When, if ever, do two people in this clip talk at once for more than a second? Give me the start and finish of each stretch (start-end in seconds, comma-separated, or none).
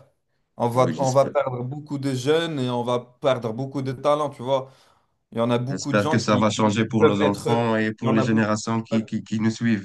5.7-8.5